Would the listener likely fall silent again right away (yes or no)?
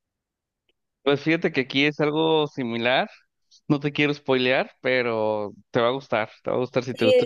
no